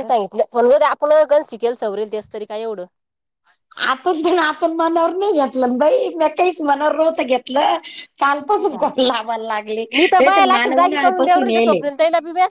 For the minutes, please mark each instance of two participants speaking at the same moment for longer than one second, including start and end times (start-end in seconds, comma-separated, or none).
10.0-11.8